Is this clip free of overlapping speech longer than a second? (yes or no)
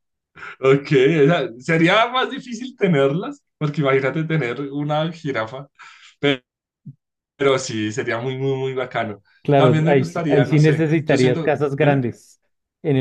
no